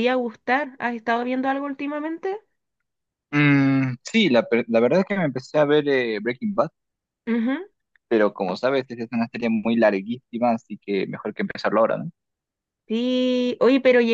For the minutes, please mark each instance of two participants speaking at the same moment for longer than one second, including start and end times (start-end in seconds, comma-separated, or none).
none